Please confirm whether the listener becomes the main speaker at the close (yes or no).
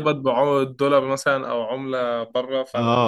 yes